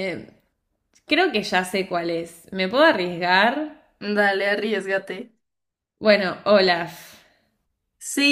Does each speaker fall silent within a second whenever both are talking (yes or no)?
yes